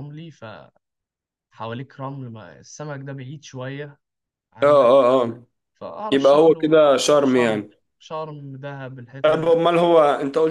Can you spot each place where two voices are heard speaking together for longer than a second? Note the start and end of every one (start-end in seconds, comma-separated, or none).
6.1-7.7